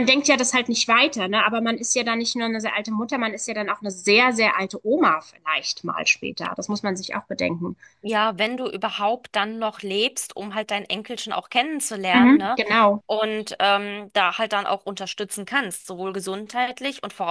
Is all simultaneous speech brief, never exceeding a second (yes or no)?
yes